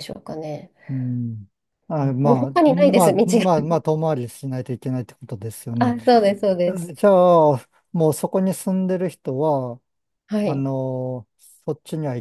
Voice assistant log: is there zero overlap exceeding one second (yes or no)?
no